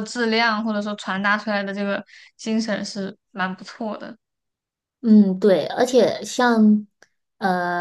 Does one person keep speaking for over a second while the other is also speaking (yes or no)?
no